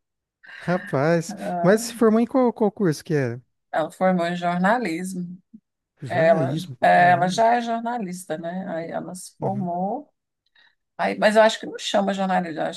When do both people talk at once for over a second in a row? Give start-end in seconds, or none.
6.1-7.4